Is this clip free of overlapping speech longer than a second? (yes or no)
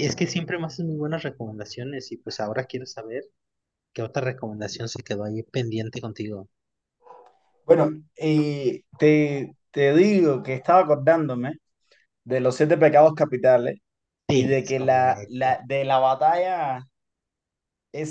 no